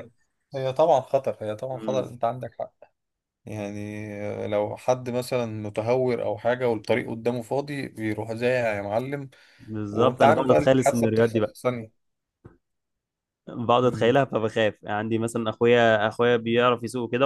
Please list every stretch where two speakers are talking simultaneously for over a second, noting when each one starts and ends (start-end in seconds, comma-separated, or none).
9.9-11.6